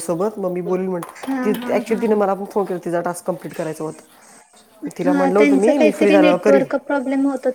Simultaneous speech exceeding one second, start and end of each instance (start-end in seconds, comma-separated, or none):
5.0-6.7